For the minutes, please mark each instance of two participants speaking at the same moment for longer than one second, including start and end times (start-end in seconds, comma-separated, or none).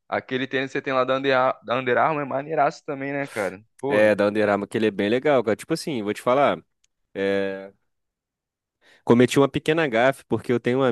none